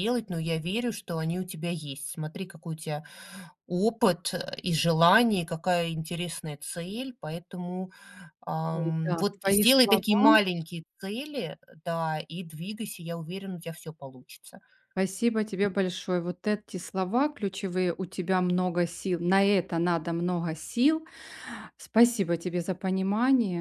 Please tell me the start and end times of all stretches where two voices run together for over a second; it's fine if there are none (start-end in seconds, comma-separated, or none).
8.8-10.2